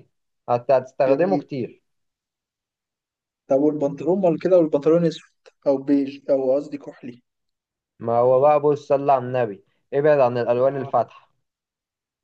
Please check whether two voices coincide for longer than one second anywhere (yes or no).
no